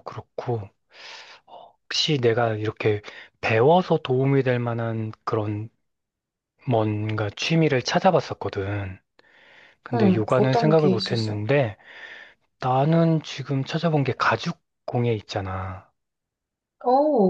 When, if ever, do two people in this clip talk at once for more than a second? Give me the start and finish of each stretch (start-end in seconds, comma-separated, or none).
9.9-11.4